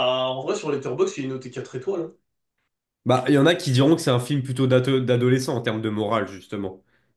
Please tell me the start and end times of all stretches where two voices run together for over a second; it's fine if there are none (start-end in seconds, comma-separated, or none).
none